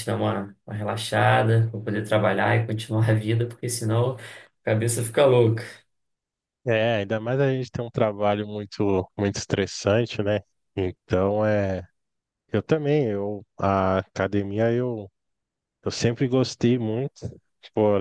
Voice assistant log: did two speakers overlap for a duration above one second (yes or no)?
no